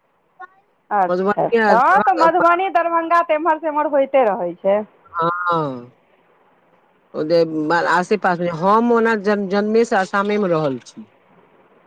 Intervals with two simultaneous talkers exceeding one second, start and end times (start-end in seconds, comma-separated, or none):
1.1-2.5